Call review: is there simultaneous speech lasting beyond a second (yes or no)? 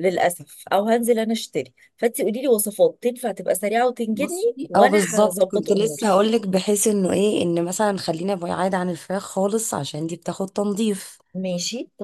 yes